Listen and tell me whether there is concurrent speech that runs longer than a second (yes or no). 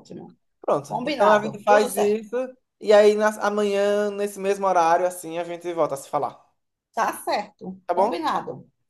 yes